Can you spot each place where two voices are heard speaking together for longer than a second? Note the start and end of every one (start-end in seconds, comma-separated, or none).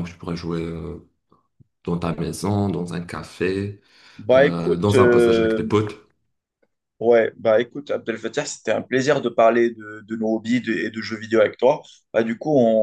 4.3-5.6